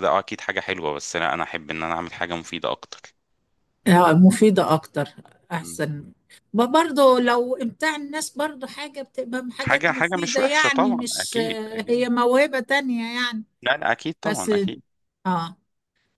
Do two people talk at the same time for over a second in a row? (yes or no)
yes